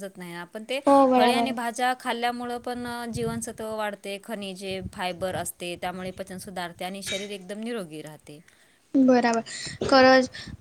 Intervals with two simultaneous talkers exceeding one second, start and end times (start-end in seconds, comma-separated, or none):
none